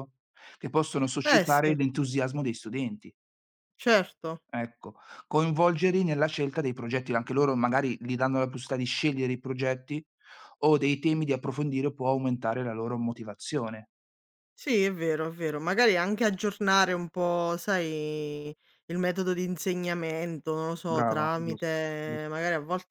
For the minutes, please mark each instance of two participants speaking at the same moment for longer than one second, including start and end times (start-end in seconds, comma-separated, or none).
20.9-22.3